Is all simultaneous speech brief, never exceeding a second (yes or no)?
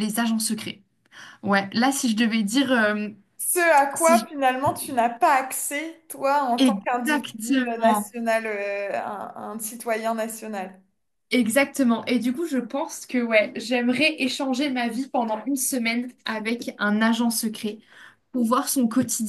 no